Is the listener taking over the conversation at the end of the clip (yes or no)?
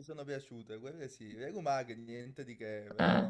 no